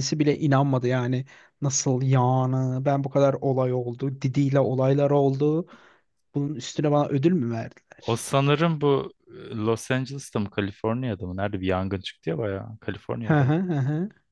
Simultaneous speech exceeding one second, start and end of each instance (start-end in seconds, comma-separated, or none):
none